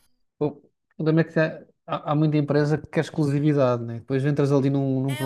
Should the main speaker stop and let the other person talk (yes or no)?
yes